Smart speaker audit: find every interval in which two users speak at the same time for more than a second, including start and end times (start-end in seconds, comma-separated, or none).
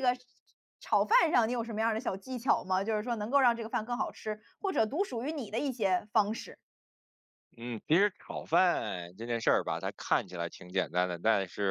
none